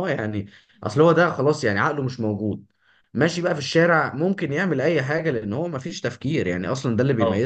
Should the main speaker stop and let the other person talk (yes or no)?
no